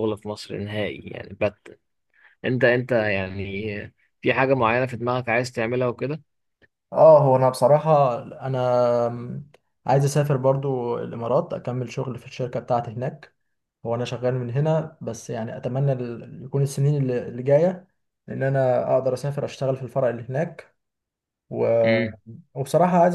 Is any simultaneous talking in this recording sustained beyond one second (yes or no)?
no